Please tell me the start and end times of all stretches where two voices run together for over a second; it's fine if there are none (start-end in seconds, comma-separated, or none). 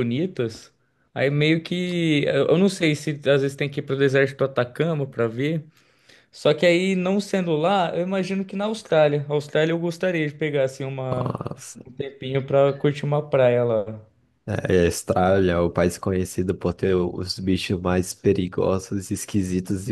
none